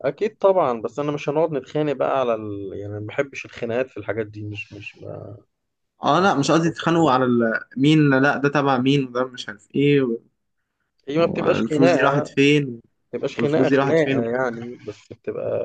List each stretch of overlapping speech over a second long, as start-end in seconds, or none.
11.2-12.4, 13.3-14.6